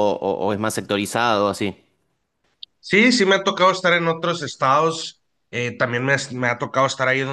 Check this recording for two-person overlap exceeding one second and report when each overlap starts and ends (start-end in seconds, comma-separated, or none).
none